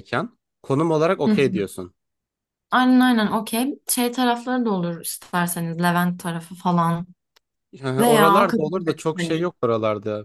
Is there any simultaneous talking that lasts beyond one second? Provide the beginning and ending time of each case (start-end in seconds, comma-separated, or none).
8.0-9.5